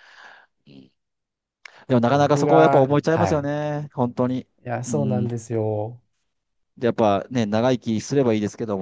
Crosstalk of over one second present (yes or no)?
yes